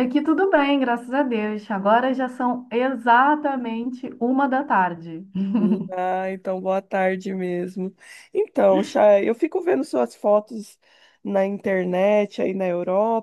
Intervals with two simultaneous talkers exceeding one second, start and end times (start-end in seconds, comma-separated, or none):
none